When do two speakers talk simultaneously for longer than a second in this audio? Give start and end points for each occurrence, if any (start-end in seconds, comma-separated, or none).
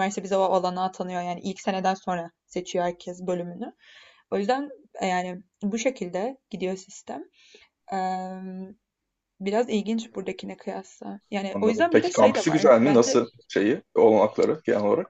11.5-13.2